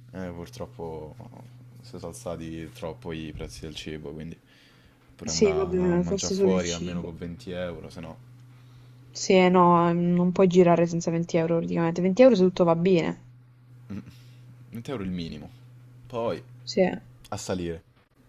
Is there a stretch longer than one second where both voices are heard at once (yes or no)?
yes